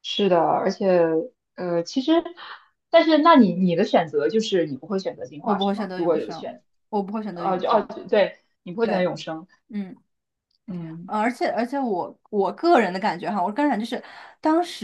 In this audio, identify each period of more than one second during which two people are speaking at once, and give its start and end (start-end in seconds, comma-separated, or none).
5.4-6.6